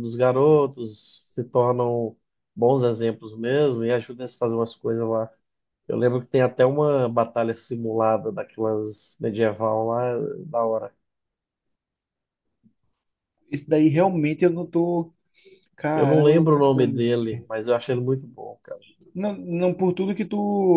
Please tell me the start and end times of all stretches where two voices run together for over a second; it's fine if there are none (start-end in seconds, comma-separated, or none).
15.9-17.5